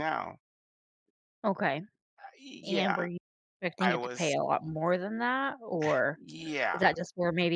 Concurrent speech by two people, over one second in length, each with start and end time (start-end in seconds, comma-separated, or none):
none